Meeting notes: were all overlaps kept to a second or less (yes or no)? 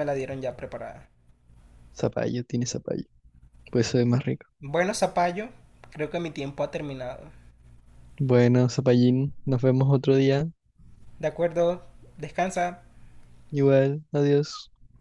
yes